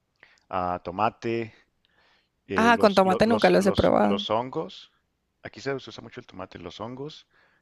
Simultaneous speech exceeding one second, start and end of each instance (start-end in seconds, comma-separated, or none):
2.5-4.2